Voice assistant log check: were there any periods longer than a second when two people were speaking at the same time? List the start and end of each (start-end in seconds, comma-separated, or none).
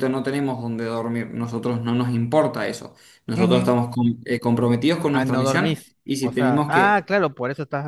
5.1-7.0